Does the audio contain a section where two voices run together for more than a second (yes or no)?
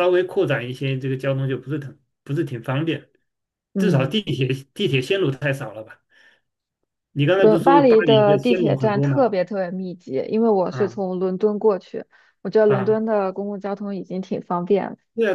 yes